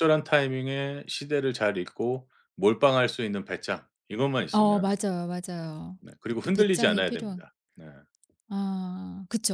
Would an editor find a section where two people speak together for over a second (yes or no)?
yes